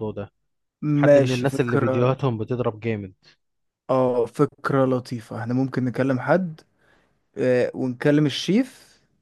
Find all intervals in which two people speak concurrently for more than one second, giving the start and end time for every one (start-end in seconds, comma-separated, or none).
0.9-2.1